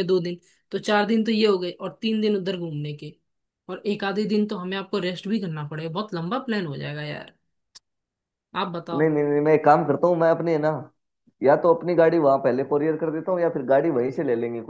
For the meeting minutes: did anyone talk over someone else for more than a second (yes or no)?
no